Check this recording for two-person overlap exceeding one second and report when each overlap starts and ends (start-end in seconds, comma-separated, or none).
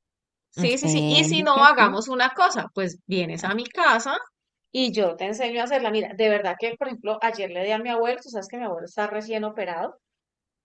0.6-2.0